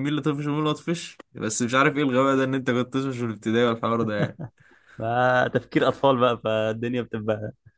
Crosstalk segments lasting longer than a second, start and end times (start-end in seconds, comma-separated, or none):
none